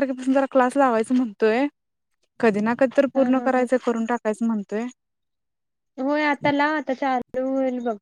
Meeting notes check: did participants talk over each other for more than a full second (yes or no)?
no